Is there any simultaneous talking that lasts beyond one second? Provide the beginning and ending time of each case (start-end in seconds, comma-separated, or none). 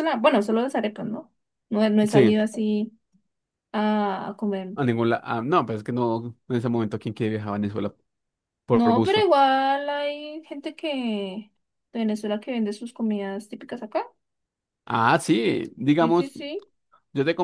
none